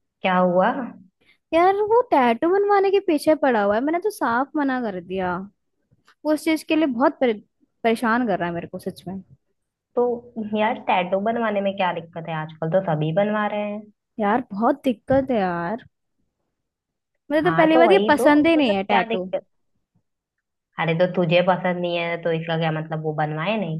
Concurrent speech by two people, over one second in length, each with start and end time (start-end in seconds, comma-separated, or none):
17.4-19.2